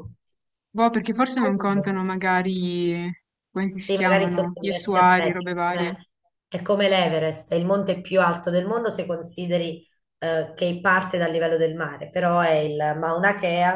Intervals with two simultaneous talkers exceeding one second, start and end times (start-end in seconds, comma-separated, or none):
3.7-5.9